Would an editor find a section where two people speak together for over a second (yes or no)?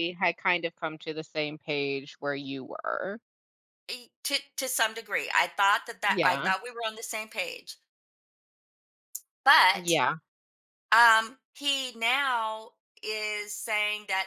no